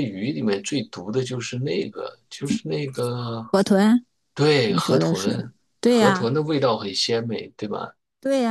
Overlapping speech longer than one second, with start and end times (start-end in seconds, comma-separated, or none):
4.7-6.3